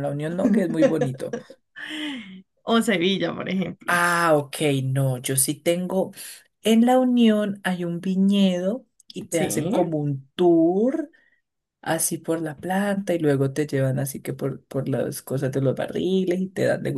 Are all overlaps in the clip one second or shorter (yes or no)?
yes